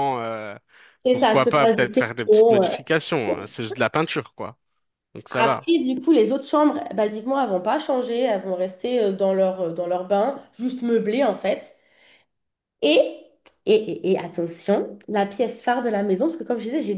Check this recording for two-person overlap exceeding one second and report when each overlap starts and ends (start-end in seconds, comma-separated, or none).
1.1-2.7